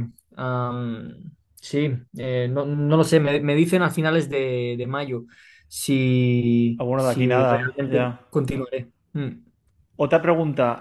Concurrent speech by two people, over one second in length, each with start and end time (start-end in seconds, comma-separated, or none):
6.8-8.2